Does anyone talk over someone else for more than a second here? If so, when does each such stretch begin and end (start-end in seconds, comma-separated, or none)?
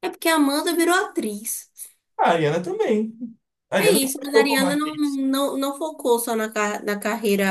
3.8-5.2